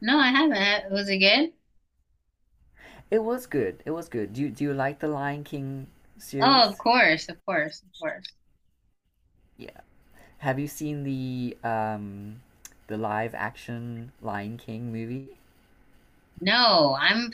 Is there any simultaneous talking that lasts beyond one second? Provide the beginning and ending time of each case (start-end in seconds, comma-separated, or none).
none